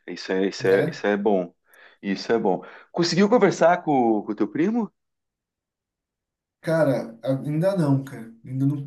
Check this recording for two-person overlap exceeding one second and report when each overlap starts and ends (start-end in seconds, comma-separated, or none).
none